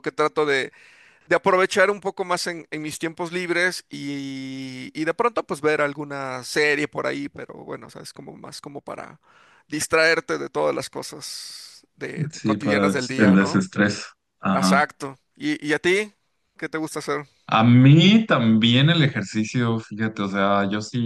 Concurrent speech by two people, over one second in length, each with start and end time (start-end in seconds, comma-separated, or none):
12.3-13.7